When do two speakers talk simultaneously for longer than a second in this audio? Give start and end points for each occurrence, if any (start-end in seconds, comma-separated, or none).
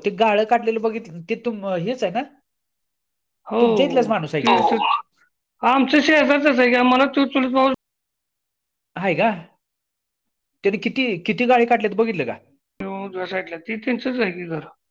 none